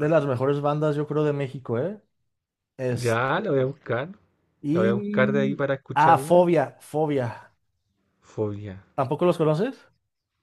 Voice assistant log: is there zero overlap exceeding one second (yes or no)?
no